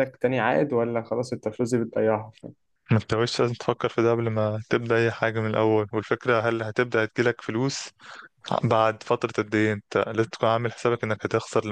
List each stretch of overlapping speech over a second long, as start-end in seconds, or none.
none